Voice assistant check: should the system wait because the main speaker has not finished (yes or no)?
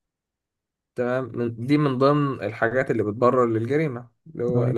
yes